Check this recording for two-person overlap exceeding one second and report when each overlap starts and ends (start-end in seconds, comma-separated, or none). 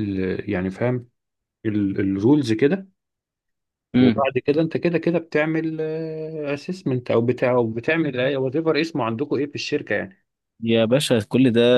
none